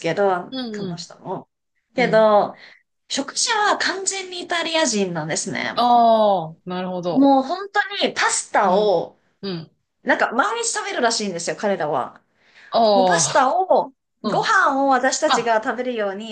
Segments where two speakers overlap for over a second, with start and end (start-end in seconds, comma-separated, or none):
none